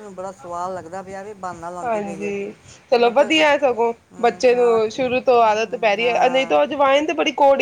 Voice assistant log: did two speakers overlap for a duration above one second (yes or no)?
yes